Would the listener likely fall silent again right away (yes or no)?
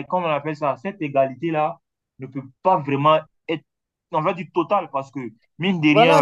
no